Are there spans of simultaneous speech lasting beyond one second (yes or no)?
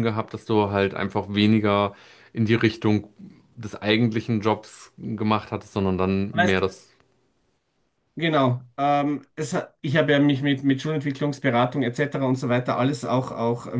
no